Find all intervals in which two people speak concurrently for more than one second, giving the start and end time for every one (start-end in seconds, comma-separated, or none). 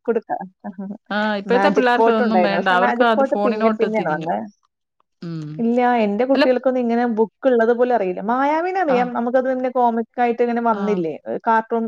1.5-4.3